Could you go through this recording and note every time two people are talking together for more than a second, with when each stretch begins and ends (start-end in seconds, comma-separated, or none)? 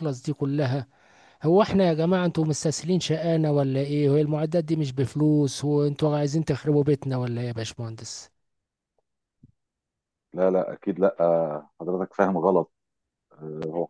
none